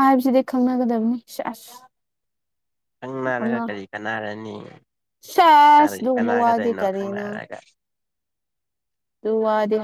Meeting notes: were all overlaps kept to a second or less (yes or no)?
no